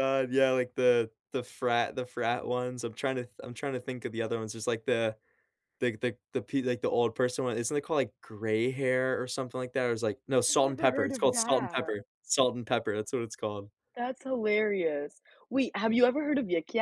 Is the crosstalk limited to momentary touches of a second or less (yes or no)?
no